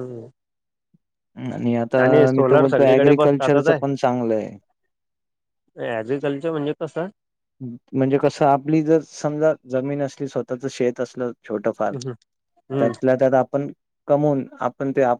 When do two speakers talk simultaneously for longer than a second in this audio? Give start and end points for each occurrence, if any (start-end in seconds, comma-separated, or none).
2.4-3.6